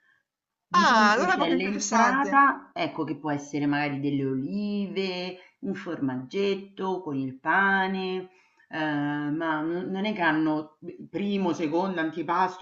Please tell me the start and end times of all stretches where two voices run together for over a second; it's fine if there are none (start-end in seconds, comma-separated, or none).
0.8-2.5